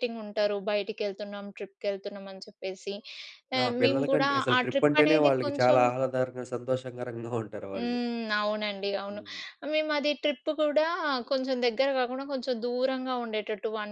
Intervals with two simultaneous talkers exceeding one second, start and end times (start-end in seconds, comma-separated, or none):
3.6-5.8